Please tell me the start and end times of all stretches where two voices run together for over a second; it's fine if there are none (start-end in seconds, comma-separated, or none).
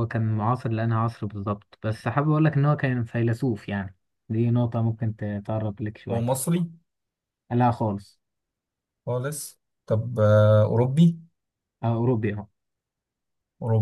none